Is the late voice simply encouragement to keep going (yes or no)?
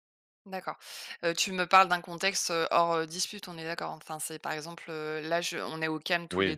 yes